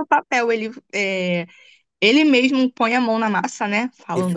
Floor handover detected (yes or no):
yes